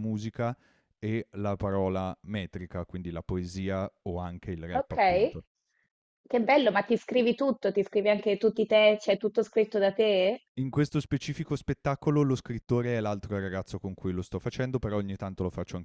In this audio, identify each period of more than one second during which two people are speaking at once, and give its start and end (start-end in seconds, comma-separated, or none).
none